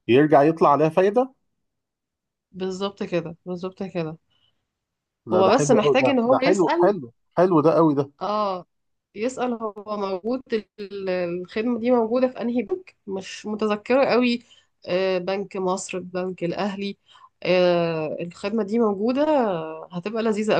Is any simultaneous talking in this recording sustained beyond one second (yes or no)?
yes